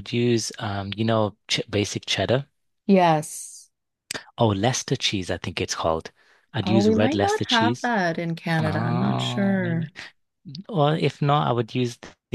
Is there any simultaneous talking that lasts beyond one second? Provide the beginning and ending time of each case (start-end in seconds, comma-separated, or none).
6.6-7.9, 8.6-9.9